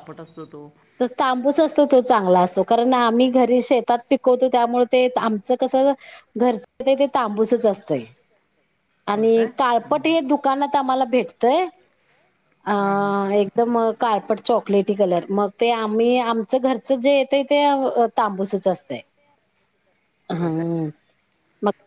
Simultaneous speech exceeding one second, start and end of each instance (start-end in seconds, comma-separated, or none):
none